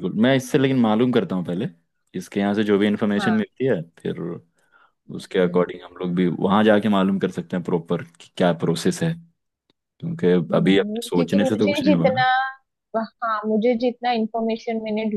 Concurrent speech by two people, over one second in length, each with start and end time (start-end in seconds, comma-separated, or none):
10.5-12.2